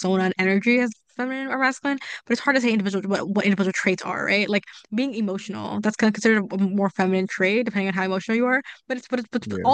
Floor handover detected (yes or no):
no